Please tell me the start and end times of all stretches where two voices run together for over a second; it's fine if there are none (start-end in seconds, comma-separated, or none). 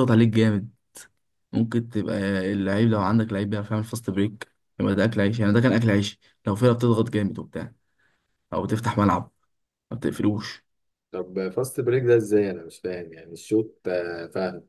none